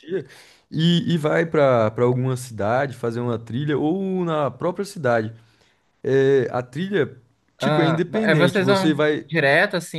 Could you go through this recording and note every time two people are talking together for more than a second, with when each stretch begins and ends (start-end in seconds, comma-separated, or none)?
7.6-9.3